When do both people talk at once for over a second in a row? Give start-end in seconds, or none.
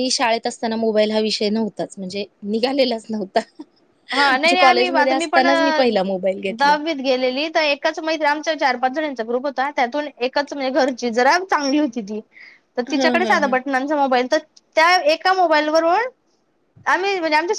4.1-5.4